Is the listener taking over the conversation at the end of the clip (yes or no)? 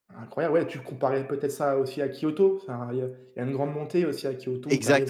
yes